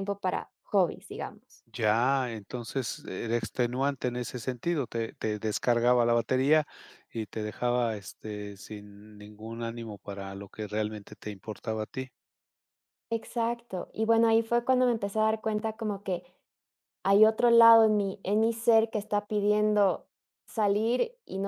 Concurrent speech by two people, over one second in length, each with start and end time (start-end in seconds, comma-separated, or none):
none